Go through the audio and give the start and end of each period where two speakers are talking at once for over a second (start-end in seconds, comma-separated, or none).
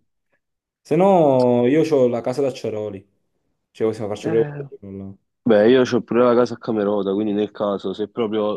none